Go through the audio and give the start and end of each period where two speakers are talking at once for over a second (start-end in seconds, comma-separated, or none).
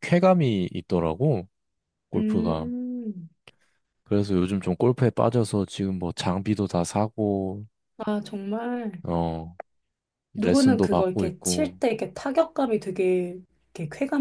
10.3-11.8